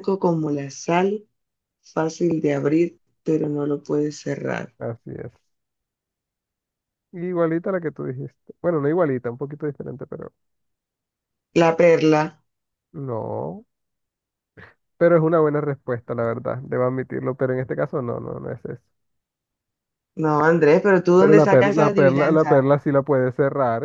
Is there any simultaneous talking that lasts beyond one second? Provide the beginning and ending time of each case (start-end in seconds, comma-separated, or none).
21.2-22.7